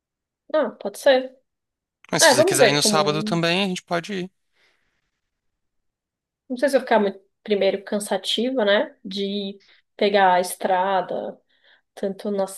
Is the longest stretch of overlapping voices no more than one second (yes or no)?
no